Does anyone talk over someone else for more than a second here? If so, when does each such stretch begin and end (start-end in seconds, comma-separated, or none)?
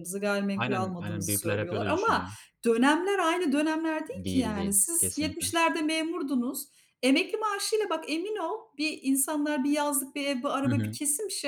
0.6-2.2, 4.1-5.4